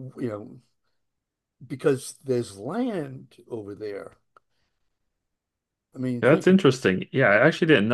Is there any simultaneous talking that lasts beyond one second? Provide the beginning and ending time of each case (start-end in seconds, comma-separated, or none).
none